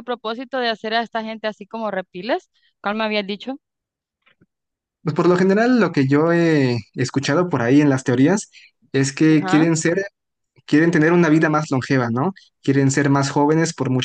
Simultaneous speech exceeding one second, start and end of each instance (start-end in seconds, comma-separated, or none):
none